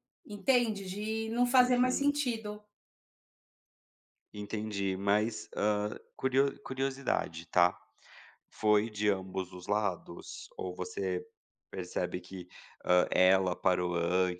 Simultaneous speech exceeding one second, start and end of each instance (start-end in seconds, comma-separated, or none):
none